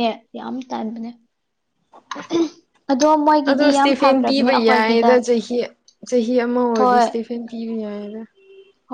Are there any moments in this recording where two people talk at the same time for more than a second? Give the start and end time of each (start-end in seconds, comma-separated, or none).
3.4-5.1